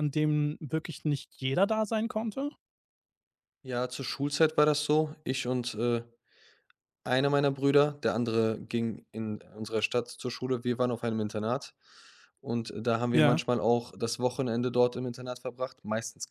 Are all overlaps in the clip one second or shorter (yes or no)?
yes